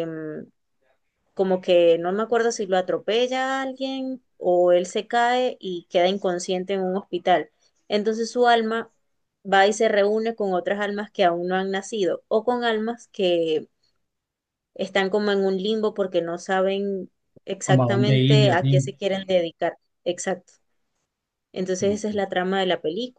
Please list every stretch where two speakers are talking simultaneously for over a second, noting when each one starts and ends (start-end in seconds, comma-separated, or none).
17.6-18.9